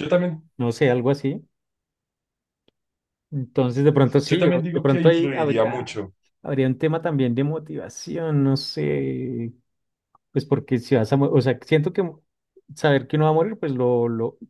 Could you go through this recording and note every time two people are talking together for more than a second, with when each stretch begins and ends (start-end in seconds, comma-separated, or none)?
4.3-5.8